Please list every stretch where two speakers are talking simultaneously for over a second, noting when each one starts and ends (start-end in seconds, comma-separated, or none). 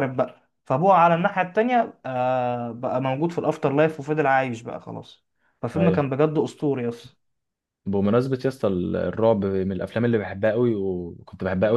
none